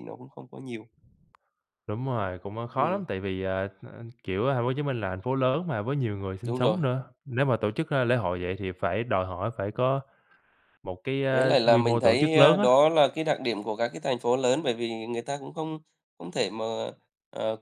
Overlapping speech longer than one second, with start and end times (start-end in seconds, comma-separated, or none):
11.3-12.7